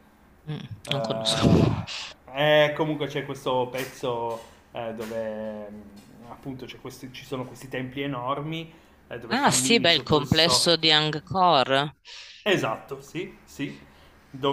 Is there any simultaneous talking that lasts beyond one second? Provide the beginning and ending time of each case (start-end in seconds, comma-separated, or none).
9.3-10.8